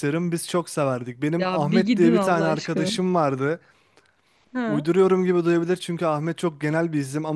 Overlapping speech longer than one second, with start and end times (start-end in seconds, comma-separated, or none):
1.4-2.9